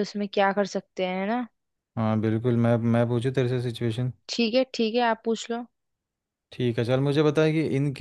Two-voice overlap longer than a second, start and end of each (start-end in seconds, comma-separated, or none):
none